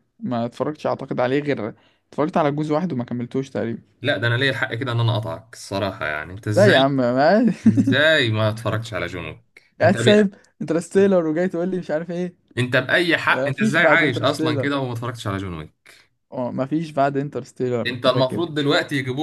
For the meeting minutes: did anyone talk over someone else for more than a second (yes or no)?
yes